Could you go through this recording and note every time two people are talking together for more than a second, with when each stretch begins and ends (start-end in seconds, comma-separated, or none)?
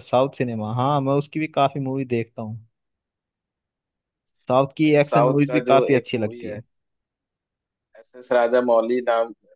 4.8-6.6